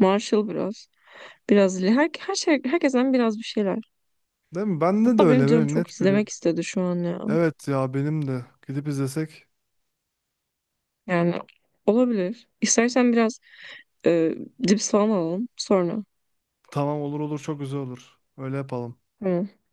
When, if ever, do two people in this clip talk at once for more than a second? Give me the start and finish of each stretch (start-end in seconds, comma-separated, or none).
5.0-6.3